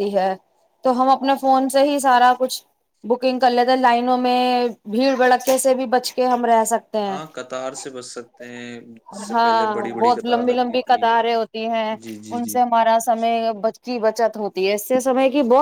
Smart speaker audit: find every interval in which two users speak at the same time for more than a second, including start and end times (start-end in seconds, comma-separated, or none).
9.3-11.0